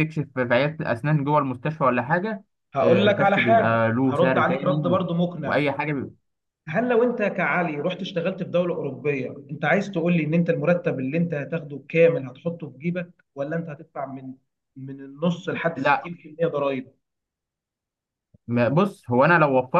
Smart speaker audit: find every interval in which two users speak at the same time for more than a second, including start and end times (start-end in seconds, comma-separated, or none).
2.8-5.6